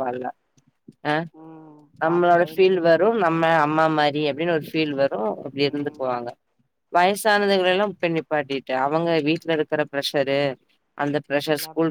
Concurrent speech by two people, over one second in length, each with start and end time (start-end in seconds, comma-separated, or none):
2.0-3.5